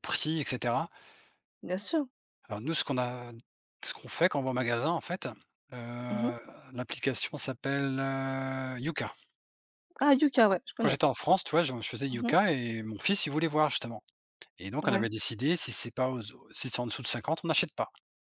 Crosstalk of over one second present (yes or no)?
no